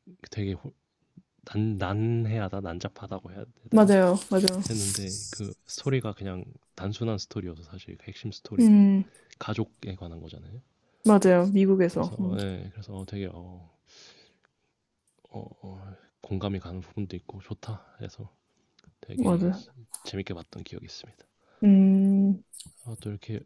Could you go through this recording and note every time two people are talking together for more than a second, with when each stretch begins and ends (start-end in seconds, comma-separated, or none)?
none